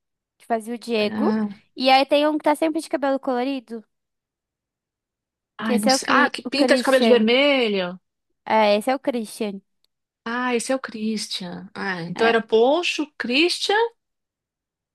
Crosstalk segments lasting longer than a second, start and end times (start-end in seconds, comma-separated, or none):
5.6-7.3